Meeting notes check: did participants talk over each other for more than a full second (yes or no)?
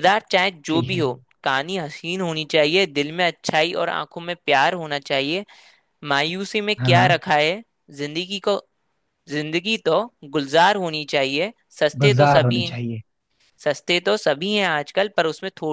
no